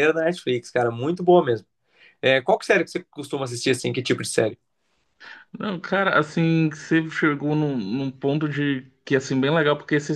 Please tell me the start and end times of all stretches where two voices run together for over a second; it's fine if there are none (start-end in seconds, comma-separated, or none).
none